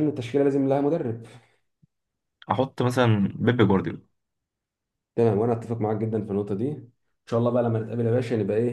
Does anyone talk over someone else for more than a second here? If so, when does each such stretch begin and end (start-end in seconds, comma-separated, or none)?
none